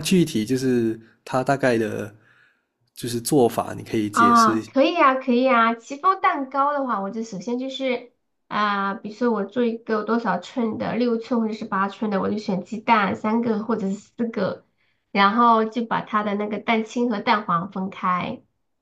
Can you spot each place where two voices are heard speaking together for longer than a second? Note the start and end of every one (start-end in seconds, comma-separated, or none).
none